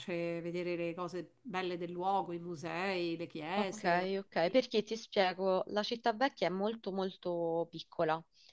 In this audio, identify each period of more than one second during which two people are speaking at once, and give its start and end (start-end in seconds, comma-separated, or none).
none